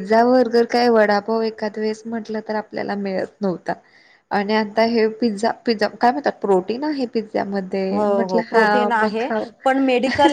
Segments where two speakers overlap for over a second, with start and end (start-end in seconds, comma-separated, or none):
none